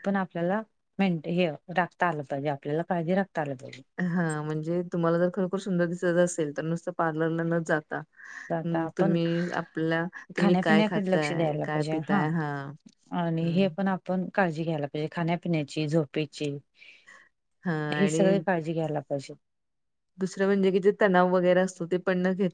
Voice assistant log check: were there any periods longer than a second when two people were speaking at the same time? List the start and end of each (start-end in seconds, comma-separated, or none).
10.4-11.9